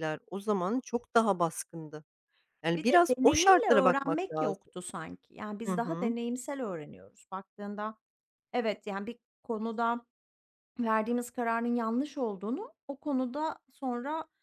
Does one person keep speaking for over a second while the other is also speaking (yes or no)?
yes